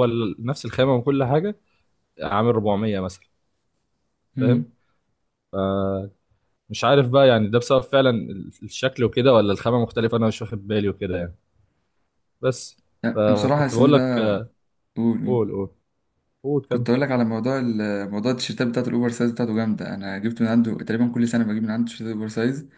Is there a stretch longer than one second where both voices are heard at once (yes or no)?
yes